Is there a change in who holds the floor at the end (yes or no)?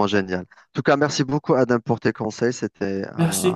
yes